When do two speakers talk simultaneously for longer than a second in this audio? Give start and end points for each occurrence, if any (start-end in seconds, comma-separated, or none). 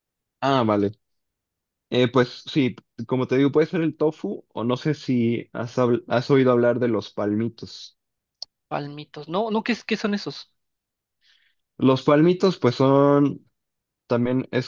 none